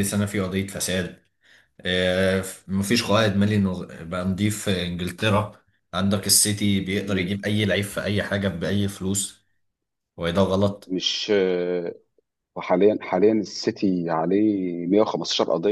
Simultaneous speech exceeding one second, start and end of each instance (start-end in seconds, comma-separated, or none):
none